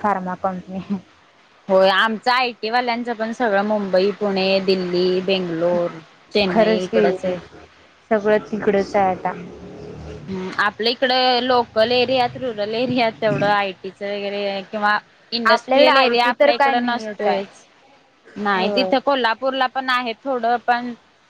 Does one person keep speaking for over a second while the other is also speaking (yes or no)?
yes